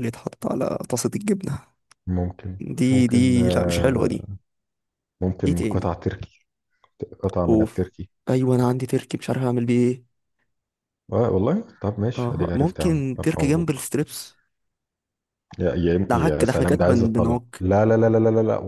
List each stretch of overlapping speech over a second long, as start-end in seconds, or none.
2.6-4.3, 12.2-13.9, 16.1-17.6